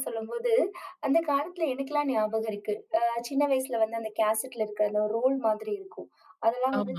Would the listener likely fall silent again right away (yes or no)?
yes